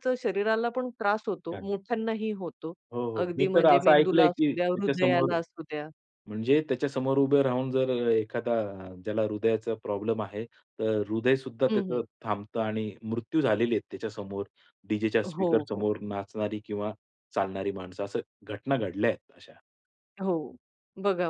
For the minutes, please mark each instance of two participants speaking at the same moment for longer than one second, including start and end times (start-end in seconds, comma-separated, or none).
3.2-5.3